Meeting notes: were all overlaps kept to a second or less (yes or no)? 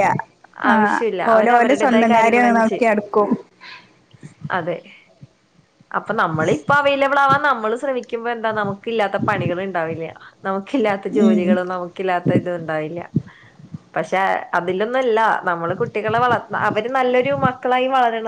no